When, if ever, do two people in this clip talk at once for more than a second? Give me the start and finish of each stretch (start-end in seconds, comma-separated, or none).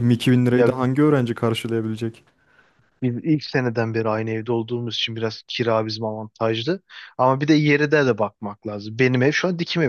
none